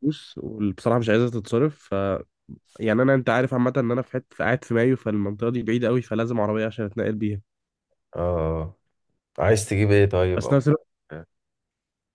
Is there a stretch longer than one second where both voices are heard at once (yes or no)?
no